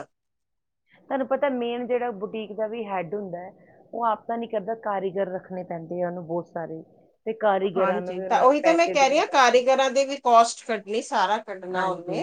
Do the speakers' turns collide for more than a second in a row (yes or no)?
yes